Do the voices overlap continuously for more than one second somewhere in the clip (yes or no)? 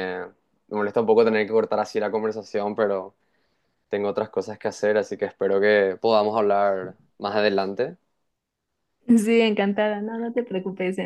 no